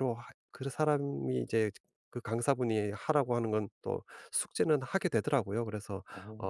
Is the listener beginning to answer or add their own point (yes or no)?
no